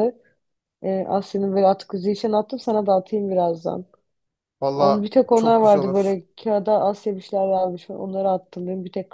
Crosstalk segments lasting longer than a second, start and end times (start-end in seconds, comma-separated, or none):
4.7-6.2